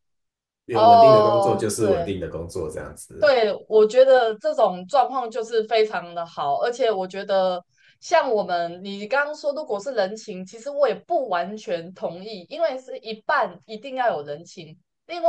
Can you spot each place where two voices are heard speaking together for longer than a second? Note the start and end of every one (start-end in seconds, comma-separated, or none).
0.7-2.1